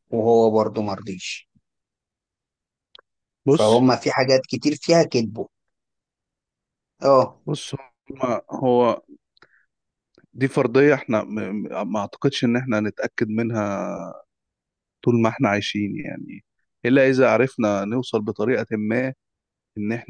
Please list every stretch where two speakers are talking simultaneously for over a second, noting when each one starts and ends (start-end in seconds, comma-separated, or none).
none